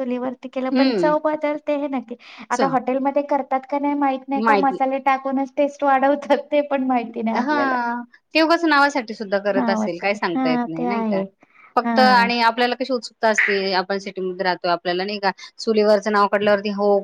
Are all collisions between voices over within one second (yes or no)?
no